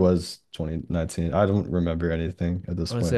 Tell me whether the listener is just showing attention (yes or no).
no